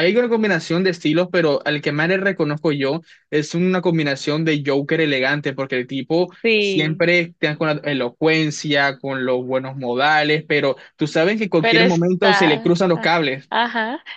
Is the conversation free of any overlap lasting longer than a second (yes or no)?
no